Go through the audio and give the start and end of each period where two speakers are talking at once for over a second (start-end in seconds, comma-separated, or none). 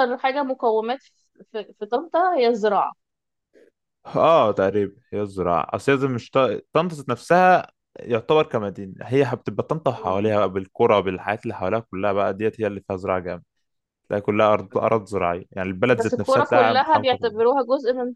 15.9-17.3